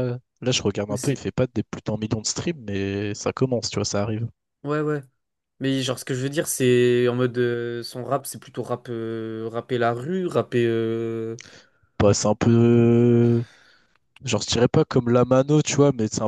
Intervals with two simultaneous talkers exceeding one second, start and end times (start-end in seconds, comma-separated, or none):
none